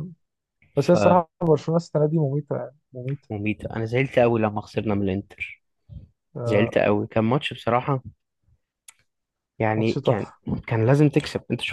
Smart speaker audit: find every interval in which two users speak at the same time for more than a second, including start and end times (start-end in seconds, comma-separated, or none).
none